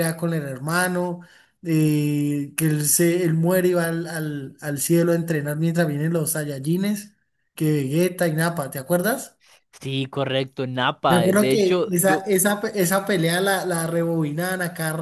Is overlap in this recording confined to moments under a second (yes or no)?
no